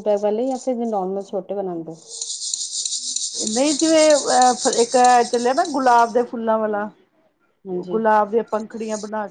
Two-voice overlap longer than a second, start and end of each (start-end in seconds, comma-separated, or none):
none